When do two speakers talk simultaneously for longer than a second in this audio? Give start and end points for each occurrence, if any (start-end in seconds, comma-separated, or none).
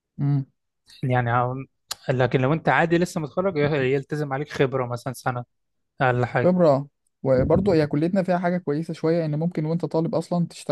none